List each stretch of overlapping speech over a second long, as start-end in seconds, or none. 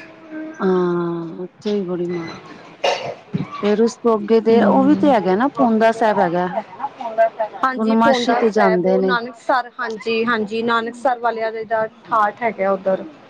7.7-9.1